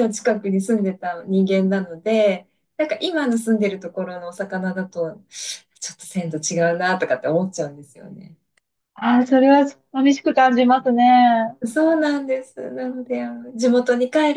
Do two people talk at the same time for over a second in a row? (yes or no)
no